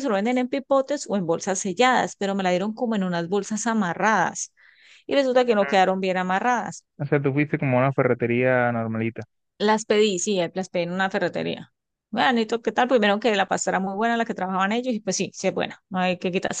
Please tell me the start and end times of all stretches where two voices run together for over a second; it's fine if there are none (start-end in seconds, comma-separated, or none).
none